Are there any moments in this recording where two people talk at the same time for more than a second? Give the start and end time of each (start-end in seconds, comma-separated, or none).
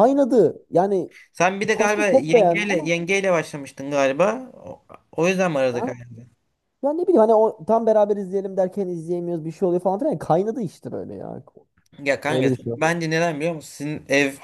1.7-2.9